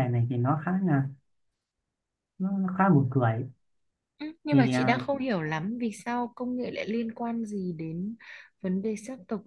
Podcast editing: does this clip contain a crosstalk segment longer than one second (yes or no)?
no